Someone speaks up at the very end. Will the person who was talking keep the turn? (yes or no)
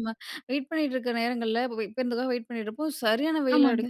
yes